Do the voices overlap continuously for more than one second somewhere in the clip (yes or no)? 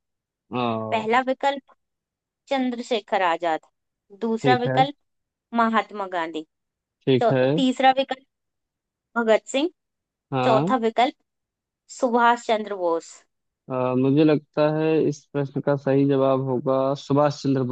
no